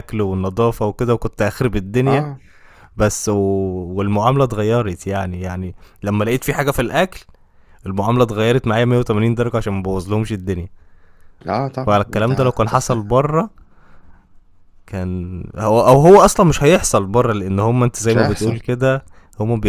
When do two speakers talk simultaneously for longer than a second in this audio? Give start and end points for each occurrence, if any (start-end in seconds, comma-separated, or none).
11.8-13.1